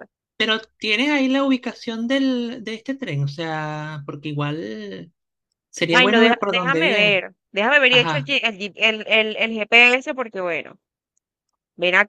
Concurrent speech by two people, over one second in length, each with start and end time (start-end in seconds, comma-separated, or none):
5.9-7.2